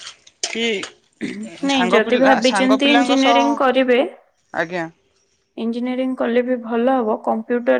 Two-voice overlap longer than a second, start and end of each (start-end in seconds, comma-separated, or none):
1.7-3.4